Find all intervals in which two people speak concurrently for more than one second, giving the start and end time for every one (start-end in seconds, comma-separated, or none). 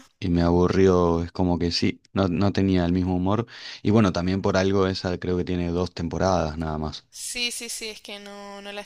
none